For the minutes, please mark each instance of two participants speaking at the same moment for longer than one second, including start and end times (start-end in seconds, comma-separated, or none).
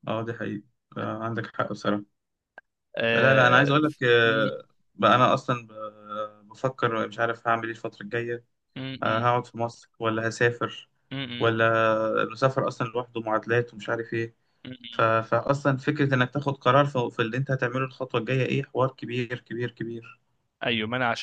3.1-4.5